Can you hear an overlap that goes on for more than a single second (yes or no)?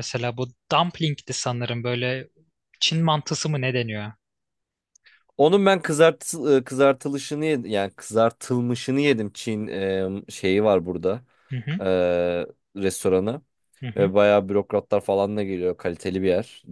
no